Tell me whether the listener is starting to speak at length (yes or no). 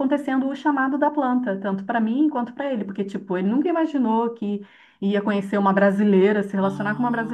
no